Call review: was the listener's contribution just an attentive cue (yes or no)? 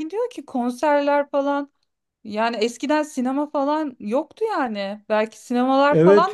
no